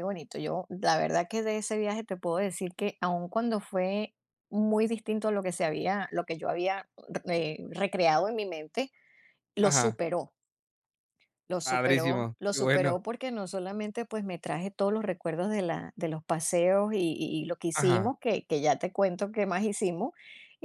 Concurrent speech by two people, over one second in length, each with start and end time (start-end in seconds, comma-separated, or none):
11.6-12.9